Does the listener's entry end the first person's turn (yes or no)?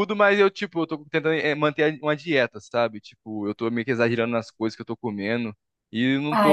no